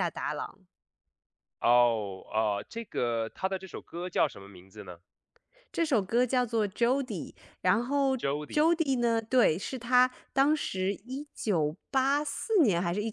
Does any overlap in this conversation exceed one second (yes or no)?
no